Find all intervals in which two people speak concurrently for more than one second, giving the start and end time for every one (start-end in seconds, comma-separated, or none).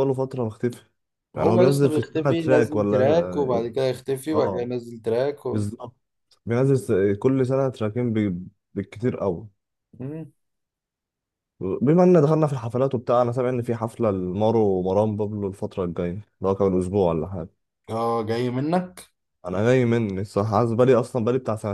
1.4-3.7